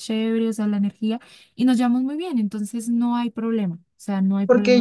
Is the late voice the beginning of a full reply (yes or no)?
yes